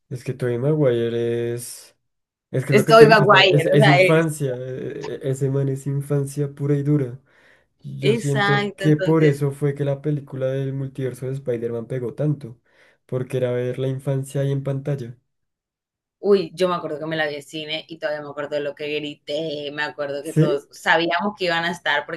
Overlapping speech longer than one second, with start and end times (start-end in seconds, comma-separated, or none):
2.7-4.3, 8.0-9.4